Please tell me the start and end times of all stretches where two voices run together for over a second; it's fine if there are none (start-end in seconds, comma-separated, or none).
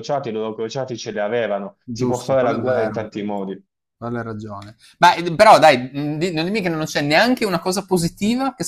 1.8-3.1